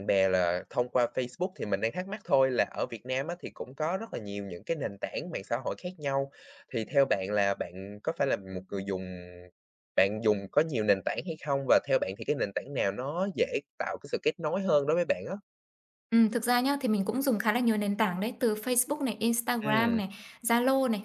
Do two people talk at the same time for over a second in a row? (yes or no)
no